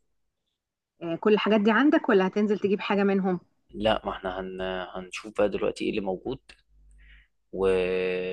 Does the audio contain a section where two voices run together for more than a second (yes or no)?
no